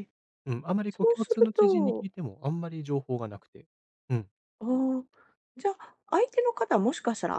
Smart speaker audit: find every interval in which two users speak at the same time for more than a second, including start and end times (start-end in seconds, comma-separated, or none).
0.9-2.1